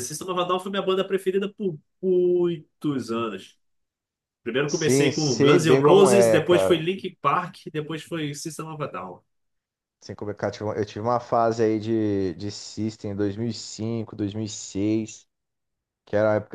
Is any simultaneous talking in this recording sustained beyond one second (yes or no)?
yes